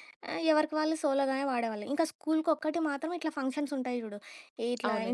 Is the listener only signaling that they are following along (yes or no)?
yes